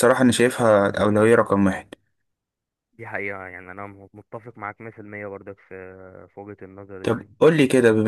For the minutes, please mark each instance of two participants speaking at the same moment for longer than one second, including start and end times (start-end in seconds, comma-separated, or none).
none